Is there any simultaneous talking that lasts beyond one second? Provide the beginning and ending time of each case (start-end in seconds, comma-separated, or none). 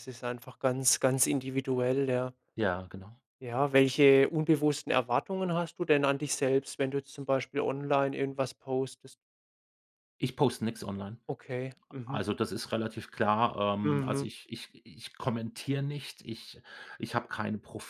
none